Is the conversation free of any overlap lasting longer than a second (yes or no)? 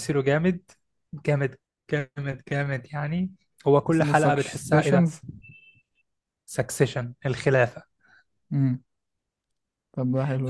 no